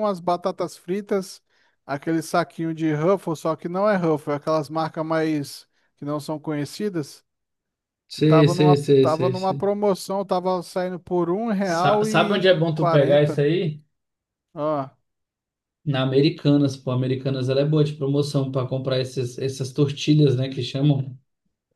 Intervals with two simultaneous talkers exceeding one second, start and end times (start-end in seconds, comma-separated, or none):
8.1-9.7, 11.6-13.4